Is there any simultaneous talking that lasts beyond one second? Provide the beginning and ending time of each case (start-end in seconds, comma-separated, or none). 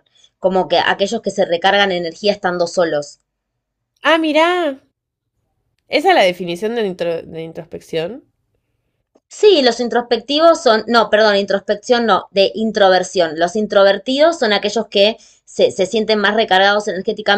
none